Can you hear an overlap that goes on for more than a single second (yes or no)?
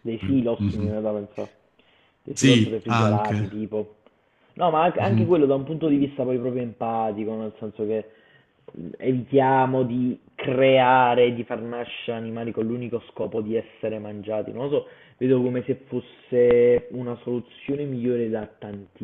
yes